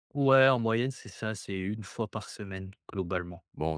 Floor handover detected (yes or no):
yes